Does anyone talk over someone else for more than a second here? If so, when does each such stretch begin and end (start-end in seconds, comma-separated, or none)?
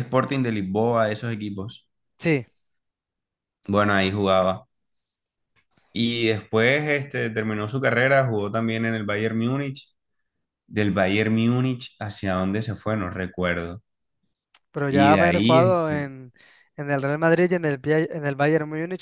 14.9-16.1